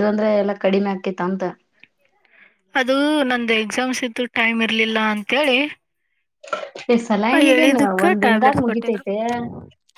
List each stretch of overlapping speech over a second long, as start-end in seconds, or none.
7.5-9.0